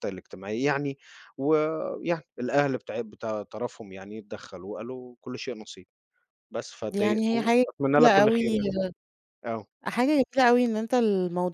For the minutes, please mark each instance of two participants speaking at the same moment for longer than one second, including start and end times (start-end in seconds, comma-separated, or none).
6.9-8.4